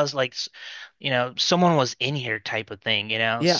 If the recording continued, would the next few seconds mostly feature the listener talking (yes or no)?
no